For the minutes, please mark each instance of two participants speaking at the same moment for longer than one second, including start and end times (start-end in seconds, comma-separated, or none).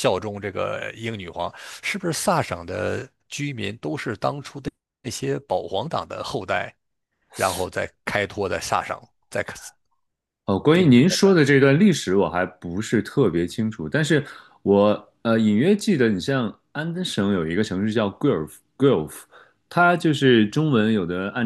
none